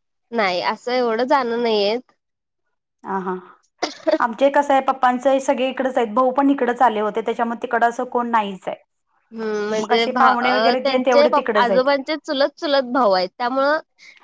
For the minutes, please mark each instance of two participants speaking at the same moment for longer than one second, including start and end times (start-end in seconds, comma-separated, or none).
9.8-11.9